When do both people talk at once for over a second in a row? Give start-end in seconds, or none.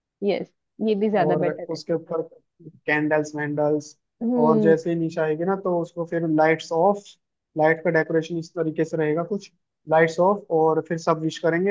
none